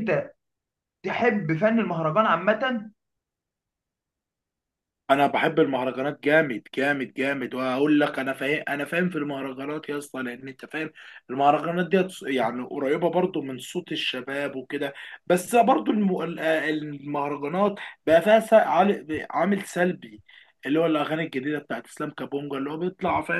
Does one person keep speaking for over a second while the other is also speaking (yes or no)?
no